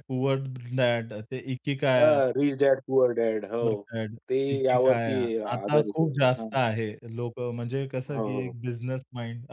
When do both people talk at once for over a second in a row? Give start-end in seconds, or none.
4.5-6.5